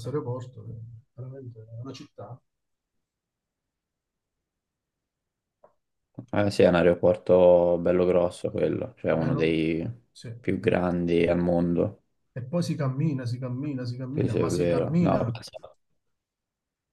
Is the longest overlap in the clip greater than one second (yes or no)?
yes